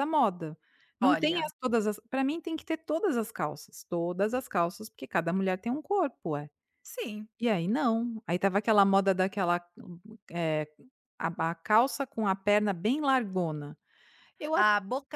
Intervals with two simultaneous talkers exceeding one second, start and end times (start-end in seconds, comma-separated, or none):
none